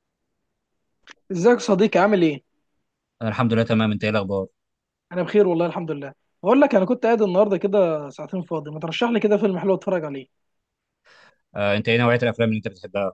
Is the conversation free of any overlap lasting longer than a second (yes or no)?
yes